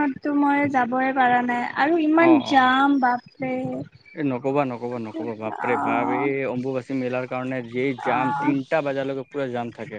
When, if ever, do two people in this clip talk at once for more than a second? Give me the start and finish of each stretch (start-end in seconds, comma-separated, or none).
none